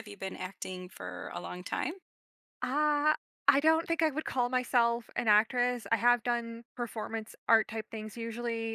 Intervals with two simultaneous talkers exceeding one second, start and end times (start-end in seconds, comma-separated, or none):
none